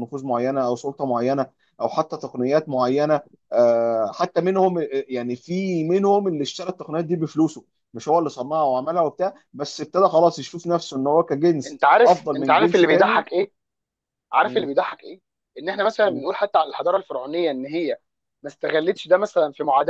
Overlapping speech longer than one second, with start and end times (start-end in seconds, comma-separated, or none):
11.7-13.3